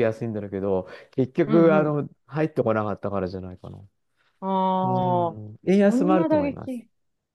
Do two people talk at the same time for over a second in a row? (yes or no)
yes